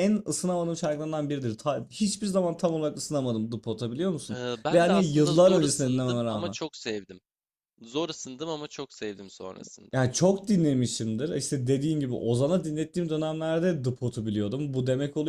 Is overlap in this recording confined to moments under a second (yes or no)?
no